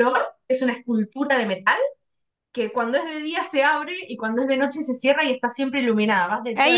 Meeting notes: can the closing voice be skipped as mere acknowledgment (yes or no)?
no